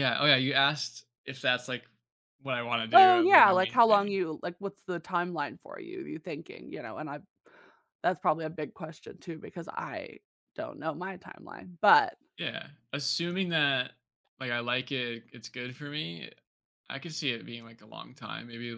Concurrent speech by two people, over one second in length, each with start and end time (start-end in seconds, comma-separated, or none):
2.9-4.2